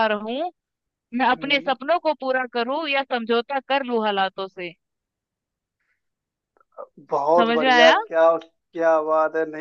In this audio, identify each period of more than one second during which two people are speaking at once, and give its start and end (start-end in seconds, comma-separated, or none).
none